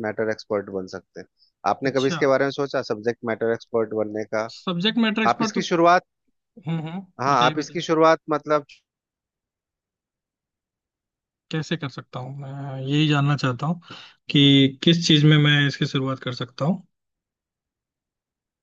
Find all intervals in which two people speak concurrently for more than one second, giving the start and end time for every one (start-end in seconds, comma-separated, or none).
none